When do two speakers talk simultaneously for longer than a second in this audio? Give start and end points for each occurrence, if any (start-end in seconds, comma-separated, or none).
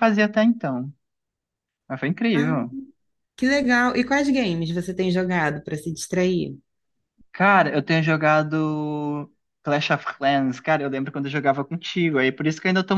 none